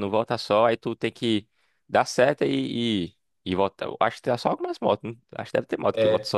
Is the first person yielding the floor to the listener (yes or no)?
yes